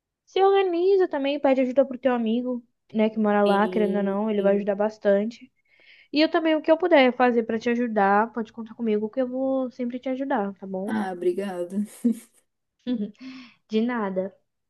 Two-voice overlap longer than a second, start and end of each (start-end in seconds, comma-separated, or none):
3.5-4.7